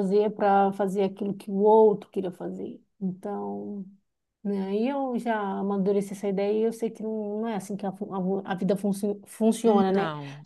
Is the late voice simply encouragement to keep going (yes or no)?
yes